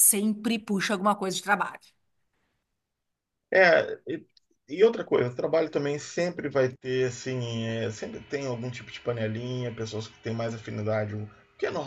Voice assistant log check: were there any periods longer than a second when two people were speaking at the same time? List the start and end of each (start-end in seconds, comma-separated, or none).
none